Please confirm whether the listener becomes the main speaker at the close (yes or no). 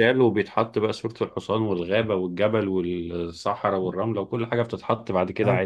yes